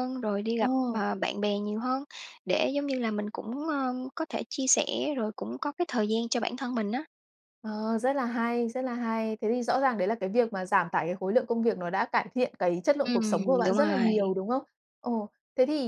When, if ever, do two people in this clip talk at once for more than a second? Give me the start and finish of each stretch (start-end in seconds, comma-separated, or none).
13.0-14.3